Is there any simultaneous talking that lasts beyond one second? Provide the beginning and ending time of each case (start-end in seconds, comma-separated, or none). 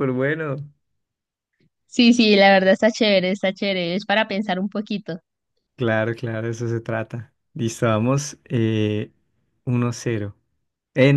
none